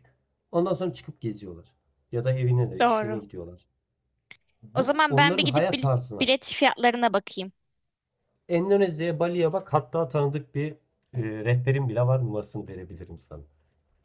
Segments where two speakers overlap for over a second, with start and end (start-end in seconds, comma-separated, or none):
4.7-6.3